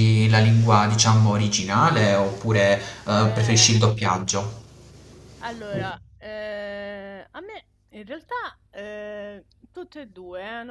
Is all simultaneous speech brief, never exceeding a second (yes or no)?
yes